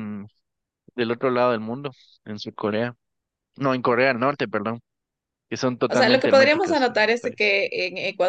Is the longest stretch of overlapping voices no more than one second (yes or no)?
no